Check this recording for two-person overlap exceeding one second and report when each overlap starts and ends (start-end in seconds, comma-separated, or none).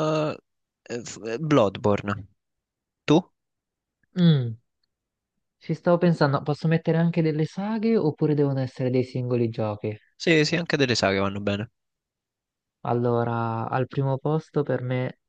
none